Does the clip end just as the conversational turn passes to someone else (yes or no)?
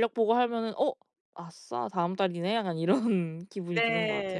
yes